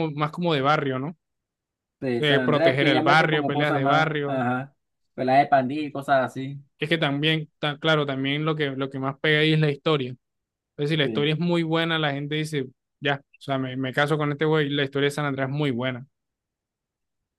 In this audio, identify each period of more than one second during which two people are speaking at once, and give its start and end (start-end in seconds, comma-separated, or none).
2.2-4.5